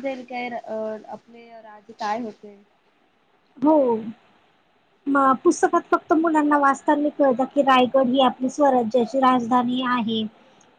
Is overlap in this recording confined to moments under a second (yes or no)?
yes